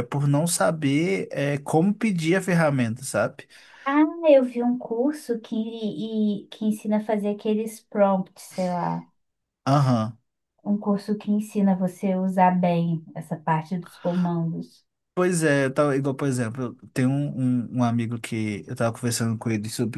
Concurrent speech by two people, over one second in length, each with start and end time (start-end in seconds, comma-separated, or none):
none